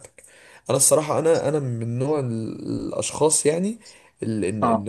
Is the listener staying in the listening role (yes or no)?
yes